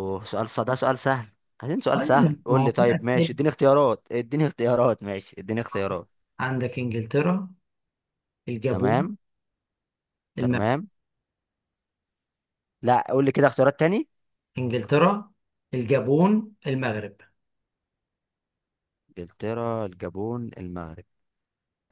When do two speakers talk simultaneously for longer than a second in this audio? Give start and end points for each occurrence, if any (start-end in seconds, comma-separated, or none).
1.9-3.3